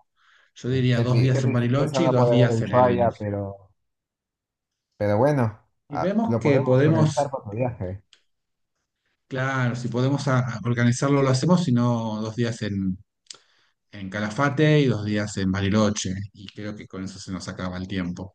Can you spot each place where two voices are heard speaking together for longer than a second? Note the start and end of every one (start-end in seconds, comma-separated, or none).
0.7-3.0, 5.9-7.3